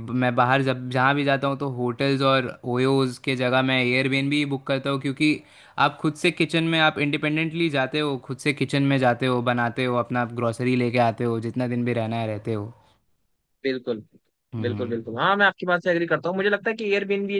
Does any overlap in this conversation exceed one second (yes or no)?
no